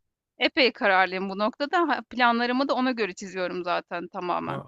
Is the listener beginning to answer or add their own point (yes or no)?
no